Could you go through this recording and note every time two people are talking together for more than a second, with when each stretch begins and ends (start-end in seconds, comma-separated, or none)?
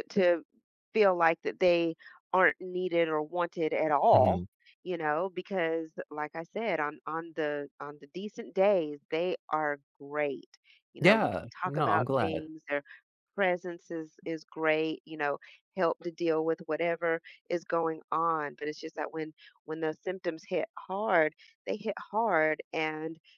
11.0-12.5